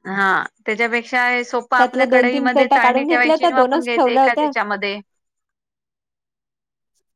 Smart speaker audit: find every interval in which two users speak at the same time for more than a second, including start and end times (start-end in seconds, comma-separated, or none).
1.8-4.5